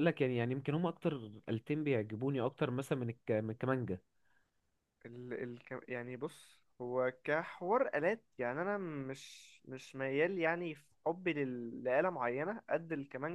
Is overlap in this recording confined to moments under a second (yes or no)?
yes